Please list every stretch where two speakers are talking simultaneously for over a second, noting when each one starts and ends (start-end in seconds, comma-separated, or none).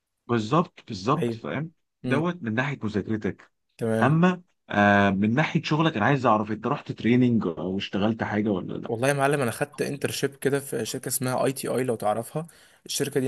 none